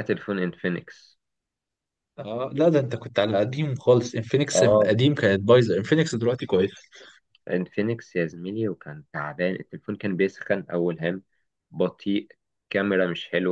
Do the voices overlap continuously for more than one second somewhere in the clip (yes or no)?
no